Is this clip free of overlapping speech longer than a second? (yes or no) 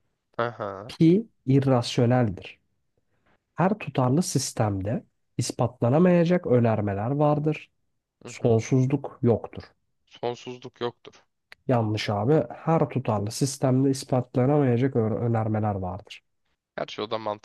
yes